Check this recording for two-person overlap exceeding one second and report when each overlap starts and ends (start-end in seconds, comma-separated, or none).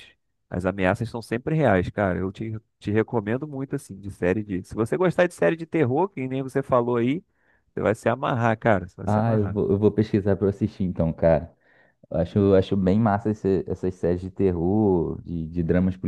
none